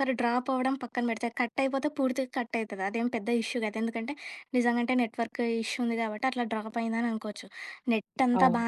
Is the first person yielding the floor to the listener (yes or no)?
no